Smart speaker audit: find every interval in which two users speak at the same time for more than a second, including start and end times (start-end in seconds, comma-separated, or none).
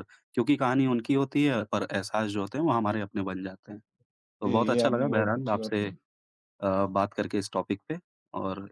4.4-5.8